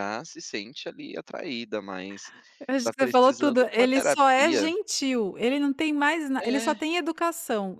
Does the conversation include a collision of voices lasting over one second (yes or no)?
yes